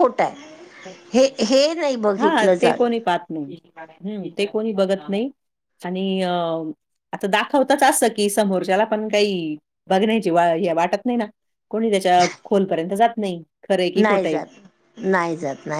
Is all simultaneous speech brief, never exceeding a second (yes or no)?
yes